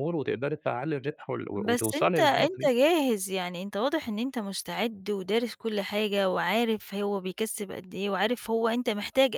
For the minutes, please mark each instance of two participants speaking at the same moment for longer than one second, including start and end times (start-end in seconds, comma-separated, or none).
1.5-2.8